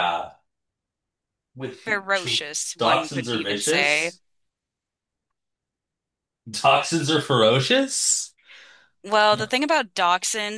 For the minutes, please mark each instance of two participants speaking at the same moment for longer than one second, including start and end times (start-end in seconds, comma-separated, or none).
2.8-4.1